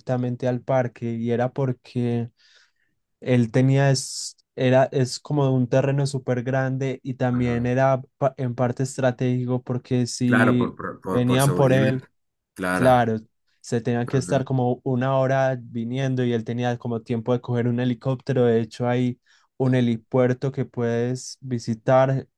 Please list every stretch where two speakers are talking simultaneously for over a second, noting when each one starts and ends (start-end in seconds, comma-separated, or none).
10.2-11.9